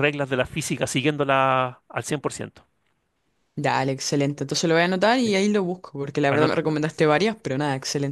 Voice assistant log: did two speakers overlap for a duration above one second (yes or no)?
no